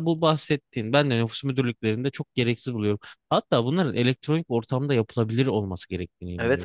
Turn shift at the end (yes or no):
yes